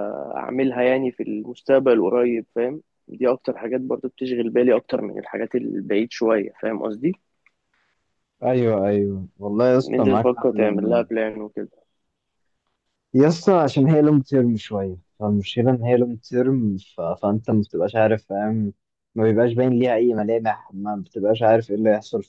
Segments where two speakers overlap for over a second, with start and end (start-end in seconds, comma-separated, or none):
9.8-11.0